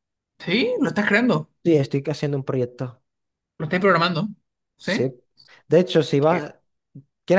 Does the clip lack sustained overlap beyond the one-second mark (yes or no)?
yes